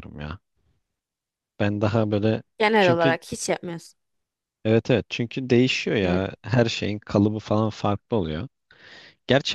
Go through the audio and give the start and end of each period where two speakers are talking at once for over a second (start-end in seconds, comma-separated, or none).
none